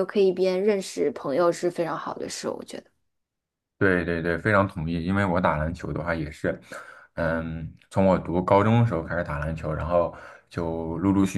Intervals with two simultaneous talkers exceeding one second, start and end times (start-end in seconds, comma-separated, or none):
none